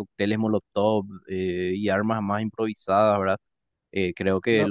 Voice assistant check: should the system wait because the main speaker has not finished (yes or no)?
yes